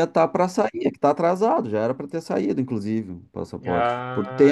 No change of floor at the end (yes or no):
no